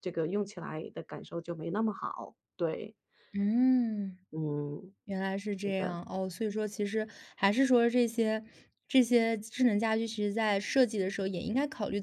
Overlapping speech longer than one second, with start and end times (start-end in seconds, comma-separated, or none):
none